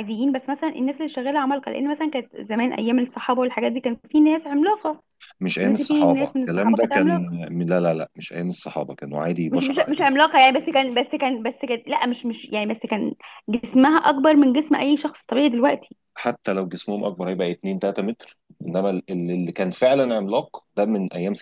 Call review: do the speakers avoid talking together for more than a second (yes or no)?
no